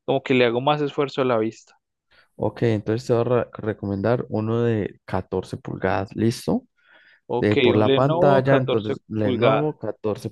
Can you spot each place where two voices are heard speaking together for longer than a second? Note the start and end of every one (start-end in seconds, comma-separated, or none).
7.4-9.7